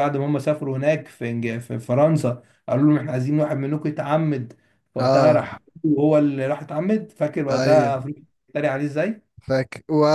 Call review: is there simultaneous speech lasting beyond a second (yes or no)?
no